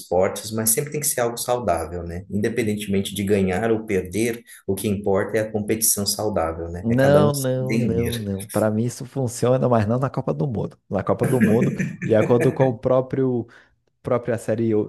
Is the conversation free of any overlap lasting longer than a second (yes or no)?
no